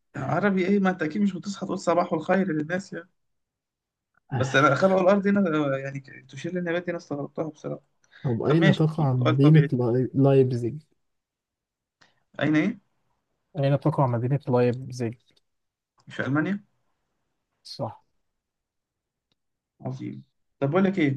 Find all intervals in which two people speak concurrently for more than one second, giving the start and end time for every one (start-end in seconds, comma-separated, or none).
8.4-9.7